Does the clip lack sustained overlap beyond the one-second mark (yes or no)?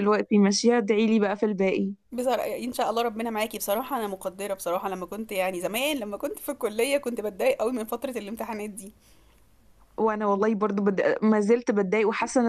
yes